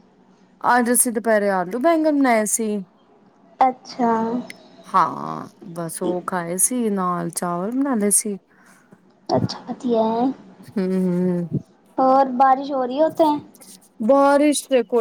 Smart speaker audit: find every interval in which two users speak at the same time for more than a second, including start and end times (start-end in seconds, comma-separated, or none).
none